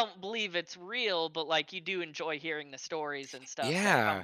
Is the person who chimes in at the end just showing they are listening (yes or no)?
no